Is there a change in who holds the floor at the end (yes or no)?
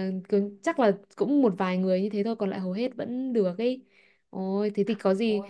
no